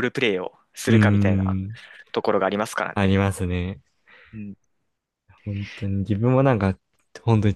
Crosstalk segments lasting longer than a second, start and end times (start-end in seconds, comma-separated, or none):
none